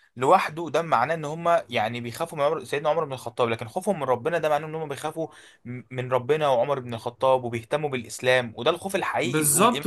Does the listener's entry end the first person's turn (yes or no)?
yes